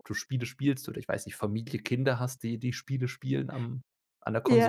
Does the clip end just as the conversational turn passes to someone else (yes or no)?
yes